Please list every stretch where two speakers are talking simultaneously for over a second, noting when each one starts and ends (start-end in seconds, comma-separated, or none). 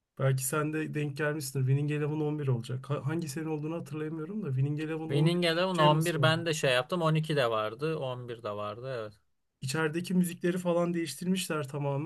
5.1-6.3